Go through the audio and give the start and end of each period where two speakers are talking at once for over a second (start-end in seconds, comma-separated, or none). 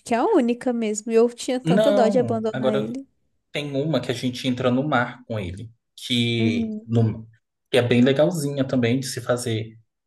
1.6-3.0